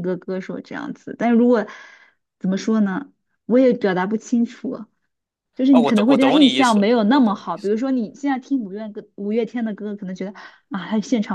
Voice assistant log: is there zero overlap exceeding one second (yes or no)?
no